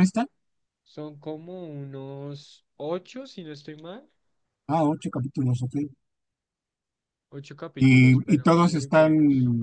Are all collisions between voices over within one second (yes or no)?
no